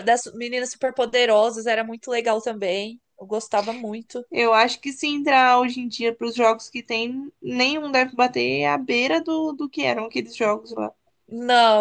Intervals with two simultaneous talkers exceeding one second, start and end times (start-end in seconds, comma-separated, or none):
none